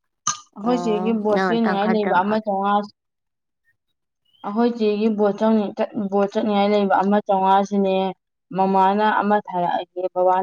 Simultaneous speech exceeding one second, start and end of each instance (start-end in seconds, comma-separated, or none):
0.6-2.4